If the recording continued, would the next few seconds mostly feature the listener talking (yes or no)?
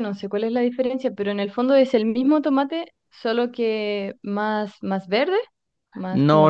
yes